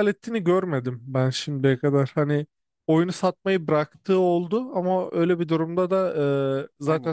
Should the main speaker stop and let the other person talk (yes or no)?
no